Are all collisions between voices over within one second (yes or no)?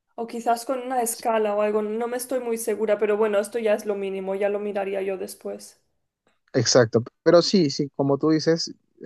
yes